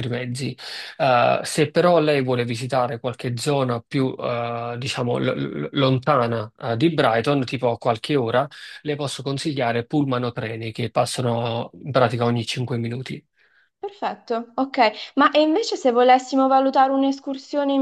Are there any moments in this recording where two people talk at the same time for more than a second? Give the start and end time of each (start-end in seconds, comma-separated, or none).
none